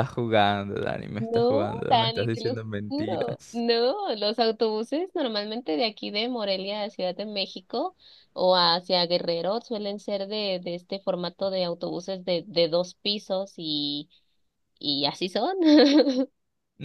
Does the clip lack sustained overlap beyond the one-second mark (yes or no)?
no